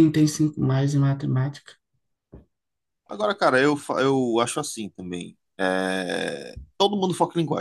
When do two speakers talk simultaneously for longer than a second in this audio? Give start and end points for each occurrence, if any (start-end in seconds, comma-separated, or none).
none